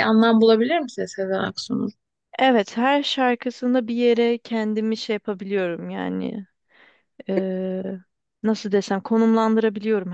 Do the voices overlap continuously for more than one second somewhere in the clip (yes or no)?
no